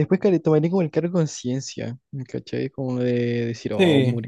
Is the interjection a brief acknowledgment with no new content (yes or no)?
yes